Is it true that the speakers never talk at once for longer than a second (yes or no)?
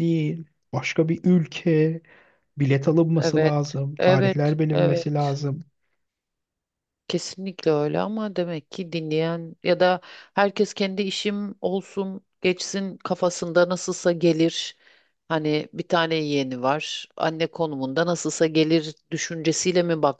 no